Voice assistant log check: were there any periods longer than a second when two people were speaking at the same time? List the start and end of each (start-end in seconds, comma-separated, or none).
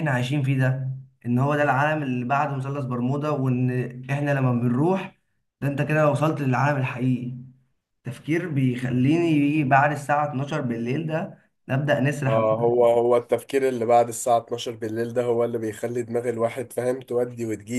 none